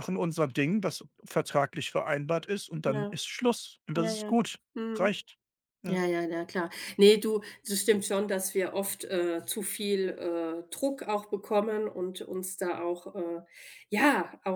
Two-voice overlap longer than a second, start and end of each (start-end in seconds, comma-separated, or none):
none